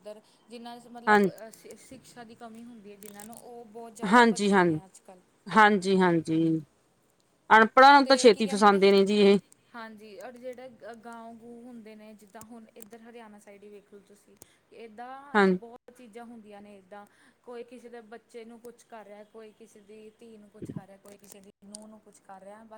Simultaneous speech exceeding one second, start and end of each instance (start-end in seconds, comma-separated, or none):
none